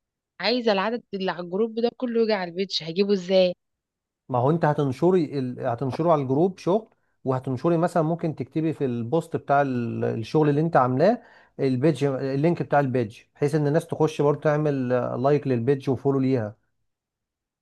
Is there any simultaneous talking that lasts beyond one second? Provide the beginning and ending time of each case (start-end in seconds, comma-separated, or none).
none